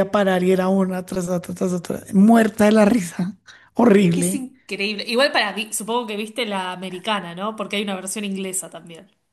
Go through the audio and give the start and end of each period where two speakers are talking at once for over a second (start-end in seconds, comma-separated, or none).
none